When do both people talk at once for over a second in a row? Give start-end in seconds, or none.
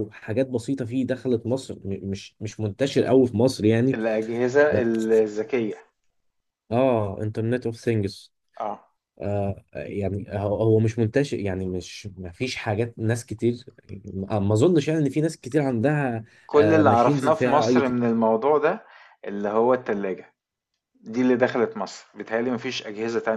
16.5-18.0